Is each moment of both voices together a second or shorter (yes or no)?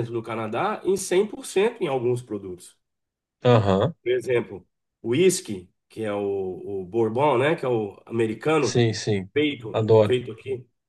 yes